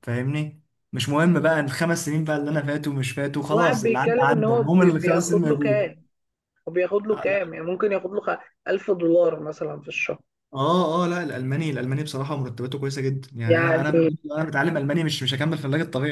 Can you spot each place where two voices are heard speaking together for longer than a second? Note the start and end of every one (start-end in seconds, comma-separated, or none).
3.5-5.9